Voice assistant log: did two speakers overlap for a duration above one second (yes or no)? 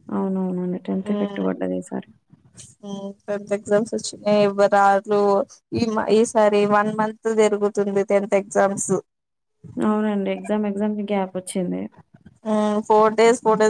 no